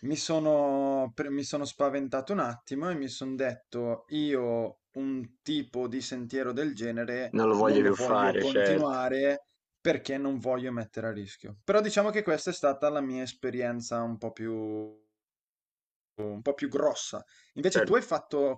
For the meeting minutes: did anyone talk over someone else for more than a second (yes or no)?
yes